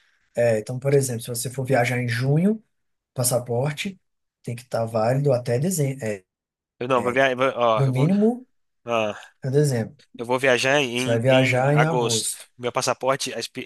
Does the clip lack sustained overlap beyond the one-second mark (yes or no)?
no